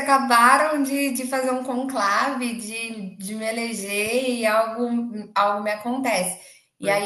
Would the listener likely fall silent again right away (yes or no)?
yes